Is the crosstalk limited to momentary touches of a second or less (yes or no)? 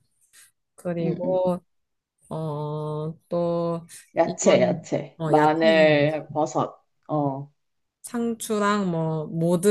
no